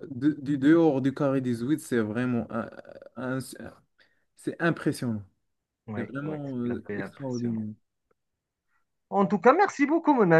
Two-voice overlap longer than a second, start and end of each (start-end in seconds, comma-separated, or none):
6.0-7.7